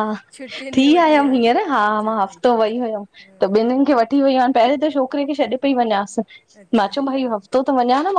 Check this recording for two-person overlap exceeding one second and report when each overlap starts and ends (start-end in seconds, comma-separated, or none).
0.8-2.4